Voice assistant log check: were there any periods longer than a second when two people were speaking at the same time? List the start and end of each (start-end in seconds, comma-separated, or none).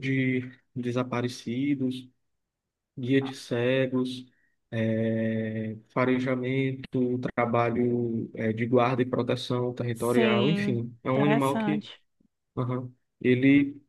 9.9-11.9